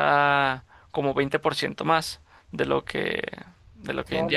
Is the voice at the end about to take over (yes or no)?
yes